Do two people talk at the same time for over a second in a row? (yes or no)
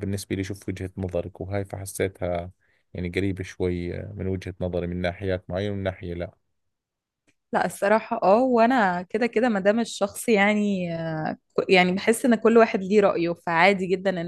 no